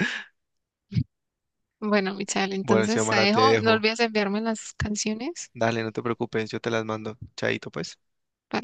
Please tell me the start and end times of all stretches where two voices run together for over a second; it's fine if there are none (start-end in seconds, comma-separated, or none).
2.6-3.9